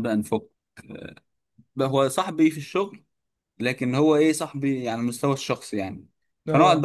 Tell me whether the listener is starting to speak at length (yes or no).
no